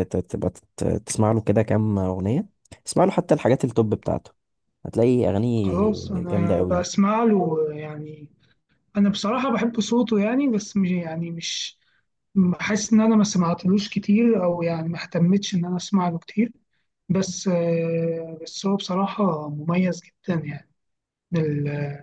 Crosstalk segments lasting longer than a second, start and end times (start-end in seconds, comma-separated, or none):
5.6-6.9